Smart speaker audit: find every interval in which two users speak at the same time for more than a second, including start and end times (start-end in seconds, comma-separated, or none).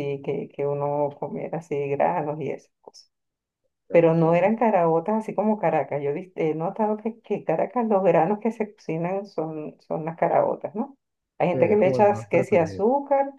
11.5-12.8